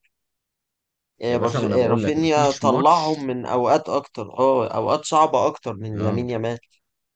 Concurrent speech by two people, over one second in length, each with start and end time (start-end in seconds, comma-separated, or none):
1.3-3.3